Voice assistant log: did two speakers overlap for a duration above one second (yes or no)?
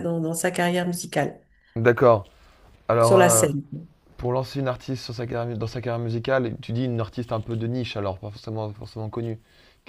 no